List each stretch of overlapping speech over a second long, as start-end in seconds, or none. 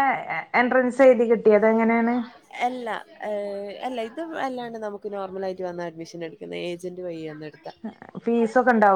none